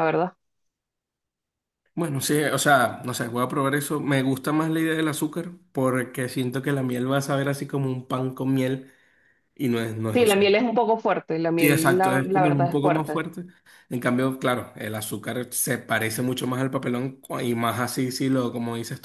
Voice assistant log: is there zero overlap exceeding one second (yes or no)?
no